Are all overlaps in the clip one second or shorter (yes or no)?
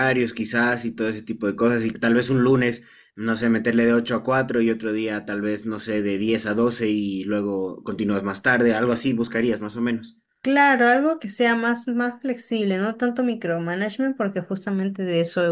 yes